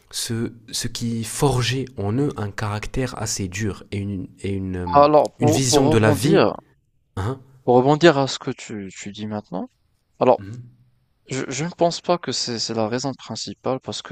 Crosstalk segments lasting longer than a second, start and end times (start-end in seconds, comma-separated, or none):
4.9-6.5